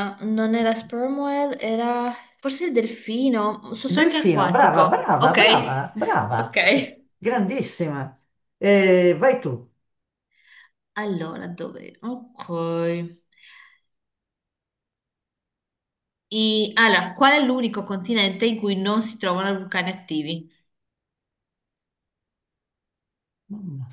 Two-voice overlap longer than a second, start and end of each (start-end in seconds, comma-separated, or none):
4.0-5.4